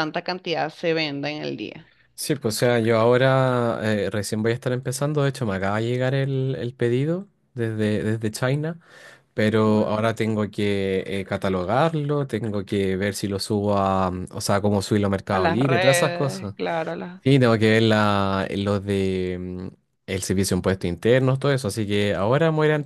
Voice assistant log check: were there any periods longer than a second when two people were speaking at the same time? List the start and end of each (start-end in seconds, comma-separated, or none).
15.3-16.5